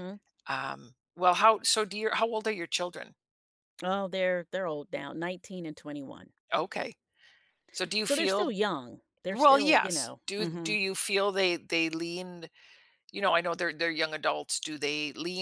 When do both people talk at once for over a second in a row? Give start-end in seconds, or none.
9.3-10.8